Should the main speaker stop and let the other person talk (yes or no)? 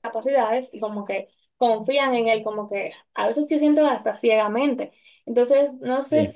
no